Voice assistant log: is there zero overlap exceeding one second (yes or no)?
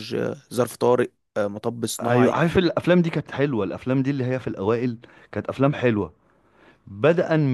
yes